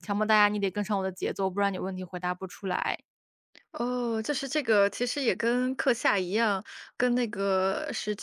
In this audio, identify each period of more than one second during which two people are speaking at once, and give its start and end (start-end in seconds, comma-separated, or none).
none